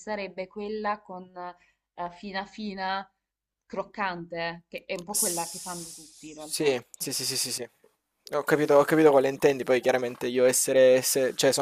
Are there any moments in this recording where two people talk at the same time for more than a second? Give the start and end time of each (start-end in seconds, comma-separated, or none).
5.1-6.8